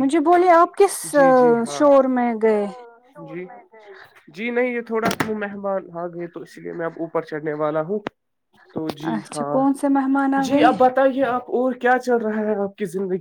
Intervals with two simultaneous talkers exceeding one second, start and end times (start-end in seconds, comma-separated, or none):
none